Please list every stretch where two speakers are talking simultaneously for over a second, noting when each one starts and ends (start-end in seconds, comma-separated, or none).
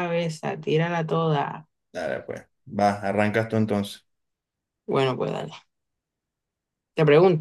none